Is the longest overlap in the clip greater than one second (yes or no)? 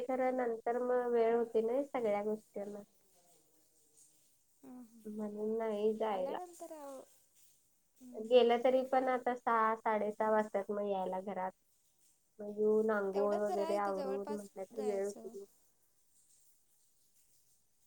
yes